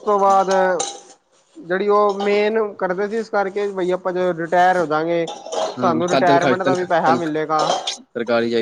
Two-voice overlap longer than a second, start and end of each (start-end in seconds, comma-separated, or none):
5.8-7.4